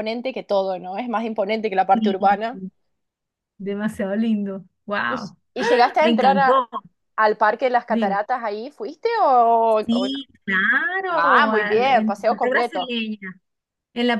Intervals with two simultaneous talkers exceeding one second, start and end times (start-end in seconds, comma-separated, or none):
11.1-12.9